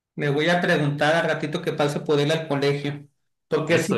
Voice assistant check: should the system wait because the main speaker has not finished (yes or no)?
yes